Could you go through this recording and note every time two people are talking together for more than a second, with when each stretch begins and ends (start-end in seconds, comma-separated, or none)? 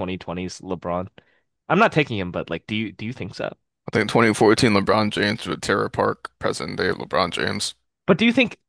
none